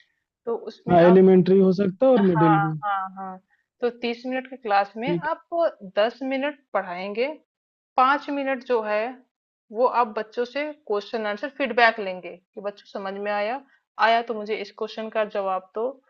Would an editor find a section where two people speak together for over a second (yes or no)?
no